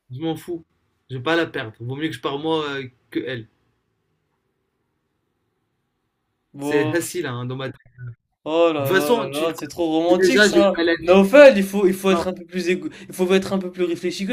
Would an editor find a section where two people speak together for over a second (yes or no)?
yes